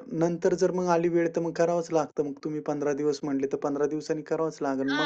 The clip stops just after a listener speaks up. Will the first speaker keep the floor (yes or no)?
no